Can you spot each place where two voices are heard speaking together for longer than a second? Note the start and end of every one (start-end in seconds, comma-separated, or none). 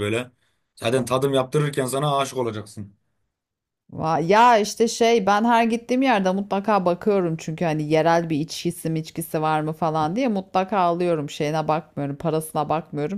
none